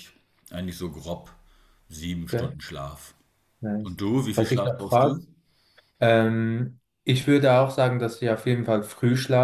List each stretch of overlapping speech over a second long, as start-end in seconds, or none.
3.8-5.2